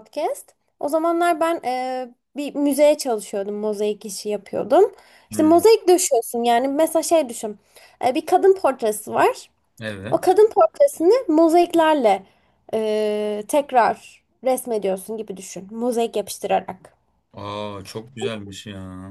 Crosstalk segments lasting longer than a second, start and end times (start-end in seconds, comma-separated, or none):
none